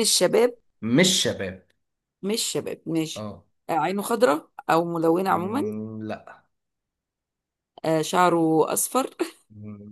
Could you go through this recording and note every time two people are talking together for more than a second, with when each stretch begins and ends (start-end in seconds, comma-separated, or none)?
none